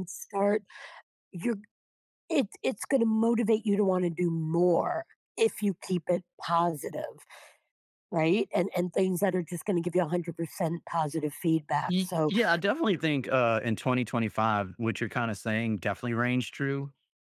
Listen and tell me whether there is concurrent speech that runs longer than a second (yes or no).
no